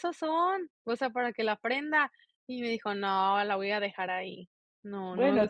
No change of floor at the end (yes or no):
no